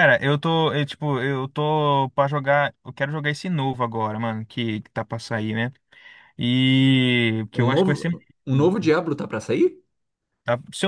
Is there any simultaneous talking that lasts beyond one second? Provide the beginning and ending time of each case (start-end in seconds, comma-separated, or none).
7.5-8.9